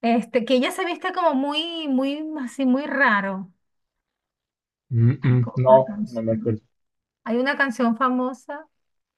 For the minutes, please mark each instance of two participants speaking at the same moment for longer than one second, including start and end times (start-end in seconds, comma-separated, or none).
5.2-6.6